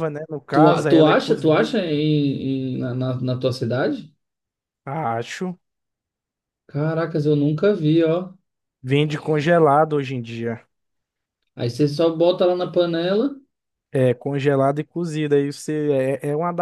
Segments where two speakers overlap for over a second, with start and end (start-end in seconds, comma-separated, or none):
0.5-1.8